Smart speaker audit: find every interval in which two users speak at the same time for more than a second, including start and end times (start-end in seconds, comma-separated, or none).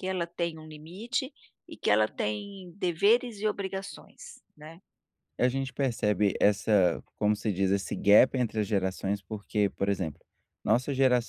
none